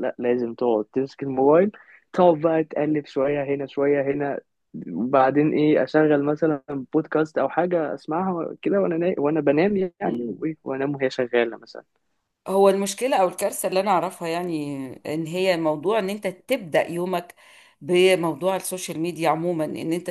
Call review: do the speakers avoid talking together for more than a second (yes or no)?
yes